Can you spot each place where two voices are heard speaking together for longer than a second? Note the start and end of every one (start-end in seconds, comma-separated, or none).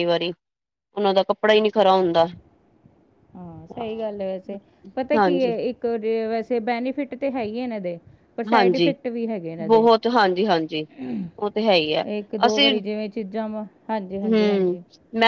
none